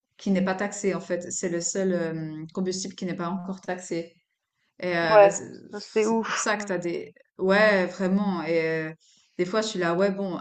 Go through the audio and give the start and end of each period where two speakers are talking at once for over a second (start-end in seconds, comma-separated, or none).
5.1-6.7